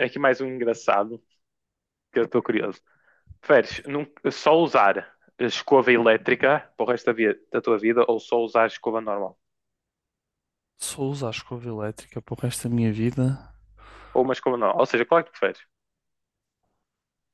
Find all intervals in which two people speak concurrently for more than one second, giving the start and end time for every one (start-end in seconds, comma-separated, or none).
none